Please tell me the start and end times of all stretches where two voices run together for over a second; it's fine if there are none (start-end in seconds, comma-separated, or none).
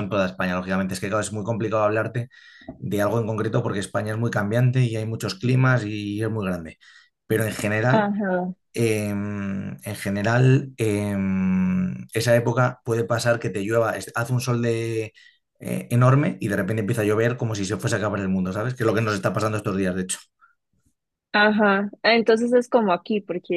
none